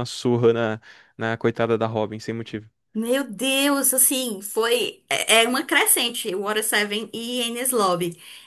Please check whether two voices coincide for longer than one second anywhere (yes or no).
no